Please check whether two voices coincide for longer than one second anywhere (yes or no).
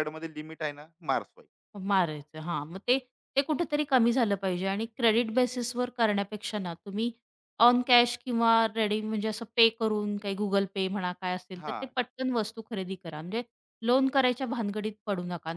no